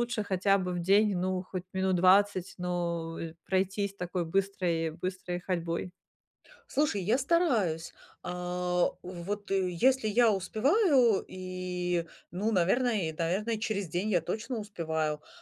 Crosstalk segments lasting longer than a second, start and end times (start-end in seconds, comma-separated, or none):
none